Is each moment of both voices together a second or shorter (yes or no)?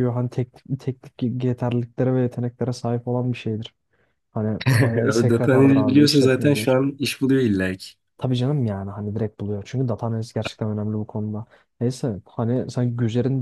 no